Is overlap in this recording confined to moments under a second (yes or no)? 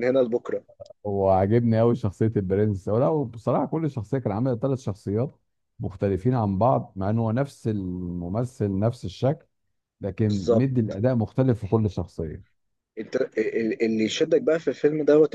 yes